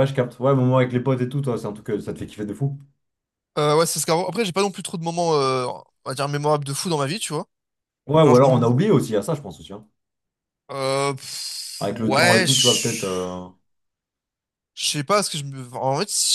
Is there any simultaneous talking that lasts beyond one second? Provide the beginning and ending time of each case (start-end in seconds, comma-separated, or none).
11.8-13.0